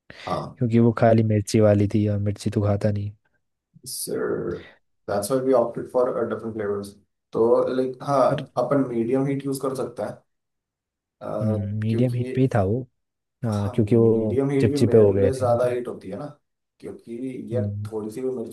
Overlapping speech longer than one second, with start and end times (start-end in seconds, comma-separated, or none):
13.5-15.8